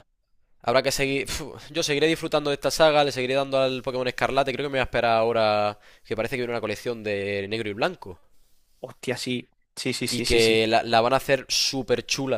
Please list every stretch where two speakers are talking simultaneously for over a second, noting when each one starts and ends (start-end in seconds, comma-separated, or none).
none